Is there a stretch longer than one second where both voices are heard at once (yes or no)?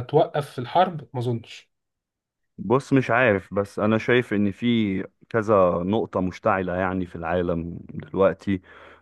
no